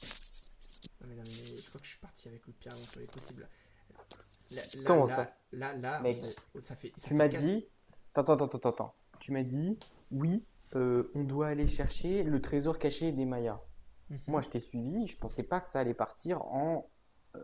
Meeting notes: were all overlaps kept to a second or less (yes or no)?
yes